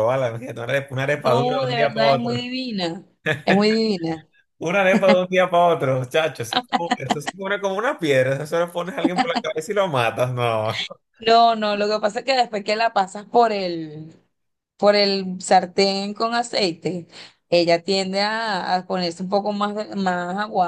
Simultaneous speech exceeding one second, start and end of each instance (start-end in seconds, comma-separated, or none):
1.1-2.5